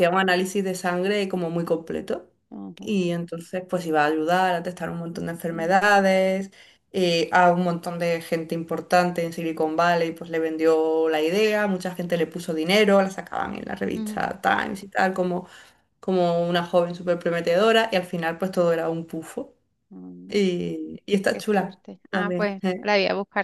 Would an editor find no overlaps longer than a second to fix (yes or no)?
no